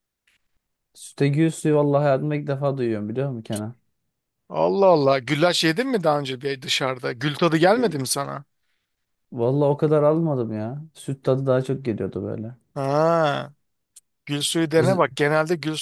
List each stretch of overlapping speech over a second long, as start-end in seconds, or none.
none